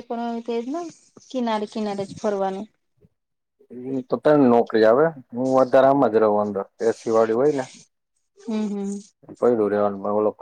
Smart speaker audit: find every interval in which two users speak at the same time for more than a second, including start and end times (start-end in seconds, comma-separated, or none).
none